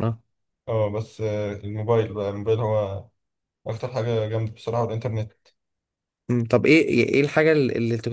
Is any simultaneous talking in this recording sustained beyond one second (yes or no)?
no